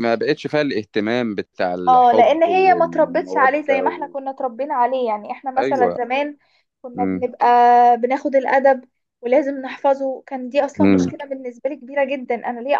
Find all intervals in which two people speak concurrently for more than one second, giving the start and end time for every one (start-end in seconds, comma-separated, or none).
1.9-4.1